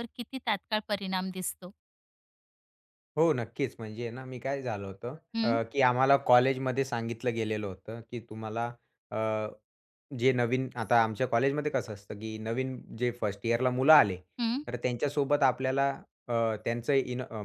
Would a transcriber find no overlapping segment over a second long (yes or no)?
yes